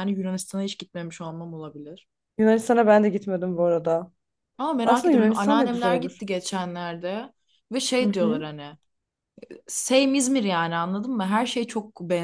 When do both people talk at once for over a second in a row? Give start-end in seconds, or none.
4.8-6.2